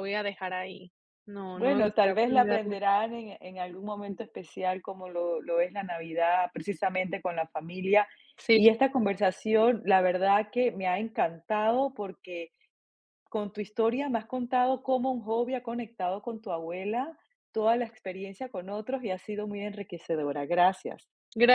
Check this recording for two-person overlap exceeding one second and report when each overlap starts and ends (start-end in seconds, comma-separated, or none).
1.5-2.8